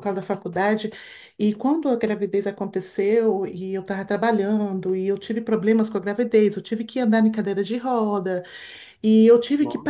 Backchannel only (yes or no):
yes